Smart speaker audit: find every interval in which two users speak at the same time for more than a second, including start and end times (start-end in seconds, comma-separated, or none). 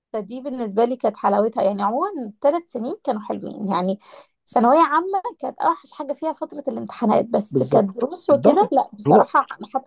7.5-9.3